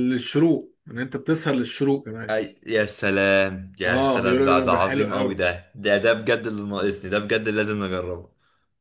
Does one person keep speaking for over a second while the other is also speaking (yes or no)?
yes